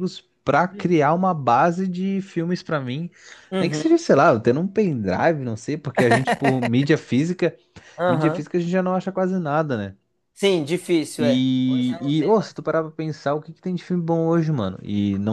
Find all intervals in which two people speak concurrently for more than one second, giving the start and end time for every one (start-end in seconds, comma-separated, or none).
11.2-12.5